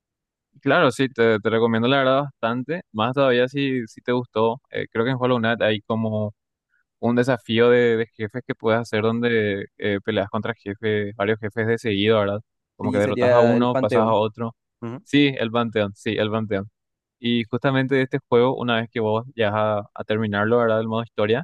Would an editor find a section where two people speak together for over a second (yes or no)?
yes